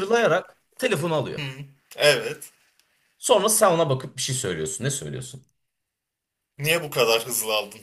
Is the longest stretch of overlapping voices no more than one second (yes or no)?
yes